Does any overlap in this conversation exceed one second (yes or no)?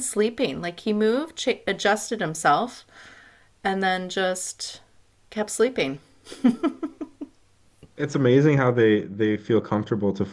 no